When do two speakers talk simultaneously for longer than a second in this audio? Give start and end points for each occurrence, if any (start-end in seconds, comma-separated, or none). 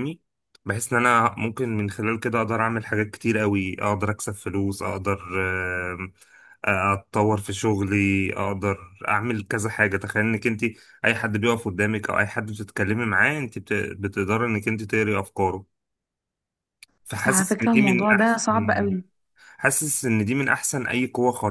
17.2-18.4